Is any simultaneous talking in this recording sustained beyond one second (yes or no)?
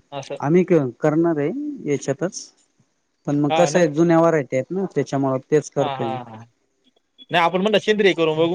no